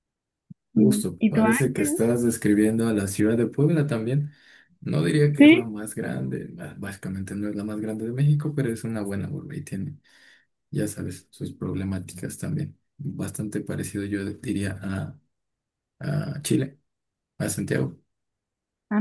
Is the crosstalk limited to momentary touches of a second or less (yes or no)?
no